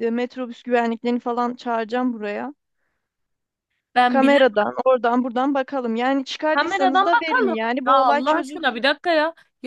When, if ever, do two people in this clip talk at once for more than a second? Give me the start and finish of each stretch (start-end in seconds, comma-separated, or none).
6.5-8.9